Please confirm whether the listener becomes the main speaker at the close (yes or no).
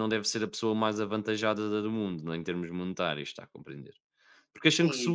yes